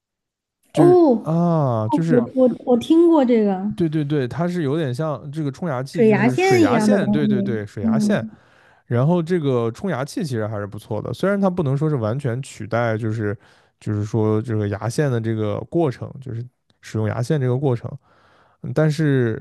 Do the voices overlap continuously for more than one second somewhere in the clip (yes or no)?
yes